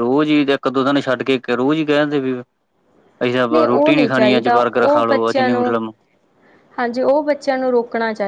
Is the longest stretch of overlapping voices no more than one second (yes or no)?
no